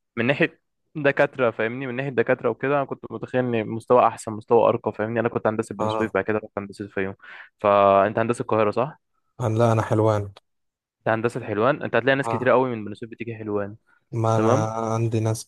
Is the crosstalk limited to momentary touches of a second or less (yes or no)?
yes